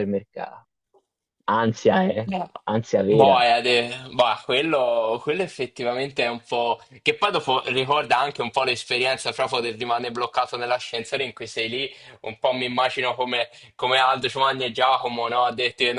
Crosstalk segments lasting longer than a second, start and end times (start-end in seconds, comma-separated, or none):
none